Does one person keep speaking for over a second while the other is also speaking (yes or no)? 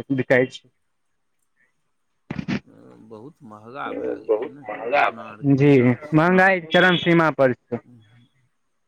yes